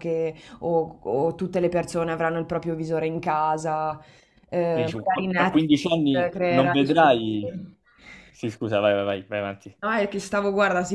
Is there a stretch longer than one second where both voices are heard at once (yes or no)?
yes